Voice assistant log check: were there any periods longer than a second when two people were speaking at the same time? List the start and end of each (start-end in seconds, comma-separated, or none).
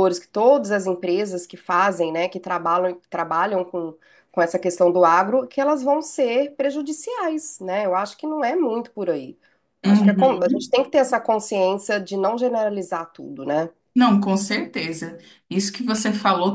none